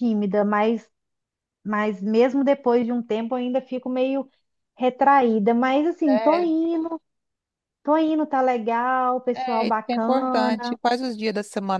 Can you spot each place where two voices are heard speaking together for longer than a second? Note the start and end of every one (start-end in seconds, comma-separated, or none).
9.3-10.8